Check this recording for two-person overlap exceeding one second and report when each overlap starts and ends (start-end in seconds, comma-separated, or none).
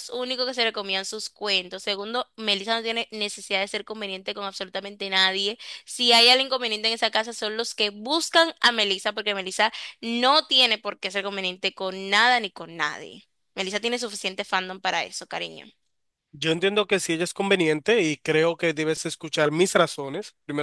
none